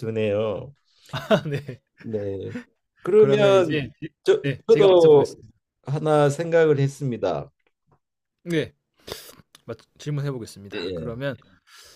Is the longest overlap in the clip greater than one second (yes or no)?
yes